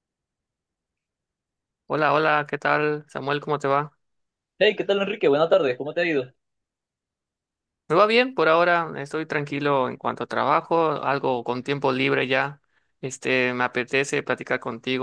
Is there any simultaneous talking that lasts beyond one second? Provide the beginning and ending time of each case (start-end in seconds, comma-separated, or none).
none